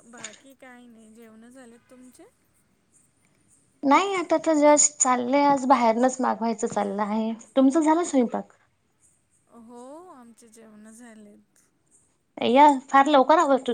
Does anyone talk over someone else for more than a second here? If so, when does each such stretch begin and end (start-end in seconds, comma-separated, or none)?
none